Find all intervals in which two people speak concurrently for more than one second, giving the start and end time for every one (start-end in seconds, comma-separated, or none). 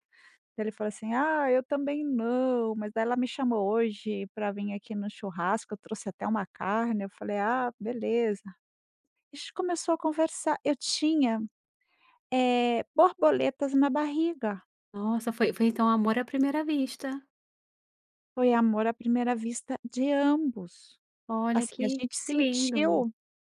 21.5-23.0